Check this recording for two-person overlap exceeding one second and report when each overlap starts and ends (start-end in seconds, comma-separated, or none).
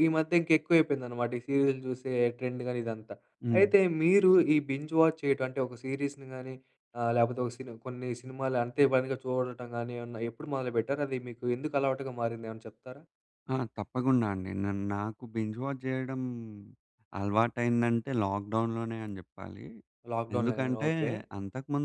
none